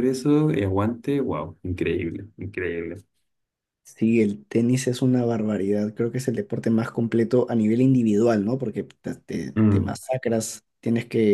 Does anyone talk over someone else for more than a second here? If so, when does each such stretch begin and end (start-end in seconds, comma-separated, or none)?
none